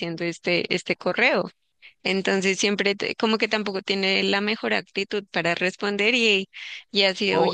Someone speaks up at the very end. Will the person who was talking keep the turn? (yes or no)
no